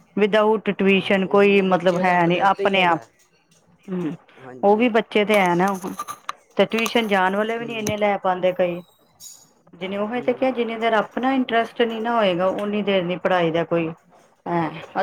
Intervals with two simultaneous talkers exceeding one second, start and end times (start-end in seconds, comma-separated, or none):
0.9-3.0